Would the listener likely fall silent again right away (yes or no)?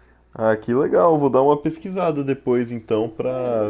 no